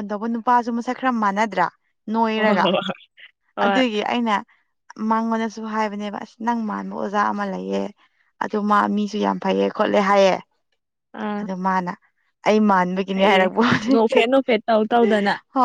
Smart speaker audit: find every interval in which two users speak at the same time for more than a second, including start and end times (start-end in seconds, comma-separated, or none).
none